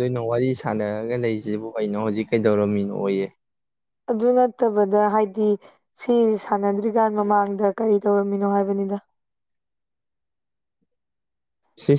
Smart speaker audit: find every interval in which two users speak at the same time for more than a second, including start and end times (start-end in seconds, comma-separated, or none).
none